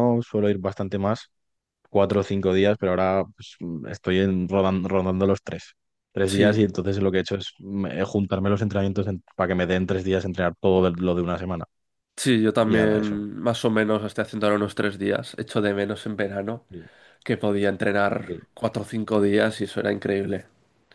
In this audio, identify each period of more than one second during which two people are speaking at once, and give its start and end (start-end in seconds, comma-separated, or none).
none